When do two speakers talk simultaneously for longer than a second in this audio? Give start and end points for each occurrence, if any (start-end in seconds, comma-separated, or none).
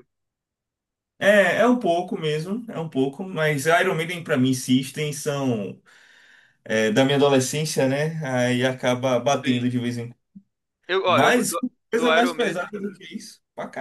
11.1-12.7